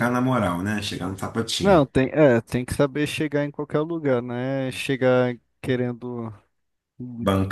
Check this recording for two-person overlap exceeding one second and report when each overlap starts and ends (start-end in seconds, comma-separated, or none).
none